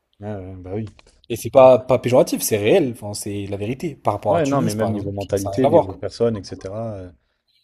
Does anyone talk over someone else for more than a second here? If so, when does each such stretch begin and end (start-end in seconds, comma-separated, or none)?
4.3-6.0